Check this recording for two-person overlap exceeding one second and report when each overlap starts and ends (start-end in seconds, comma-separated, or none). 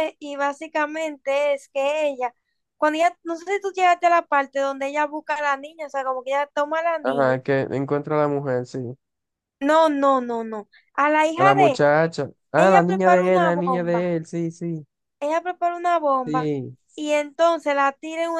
12.6-14.1